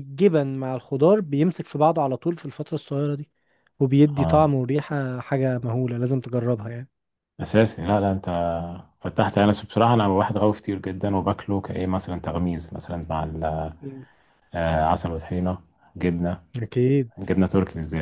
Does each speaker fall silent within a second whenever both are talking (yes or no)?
yes